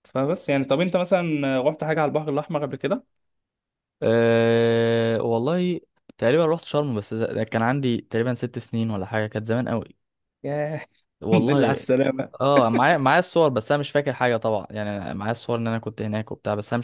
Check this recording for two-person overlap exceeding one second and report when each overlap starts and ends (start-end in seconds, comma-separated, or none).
none